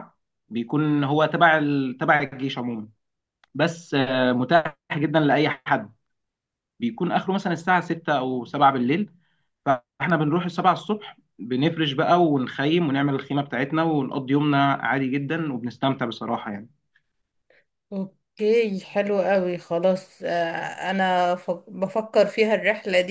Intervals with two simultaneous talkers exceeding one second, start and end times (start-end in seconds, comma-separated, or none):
none